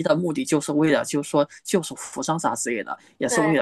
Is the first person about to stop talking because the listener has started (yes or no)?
no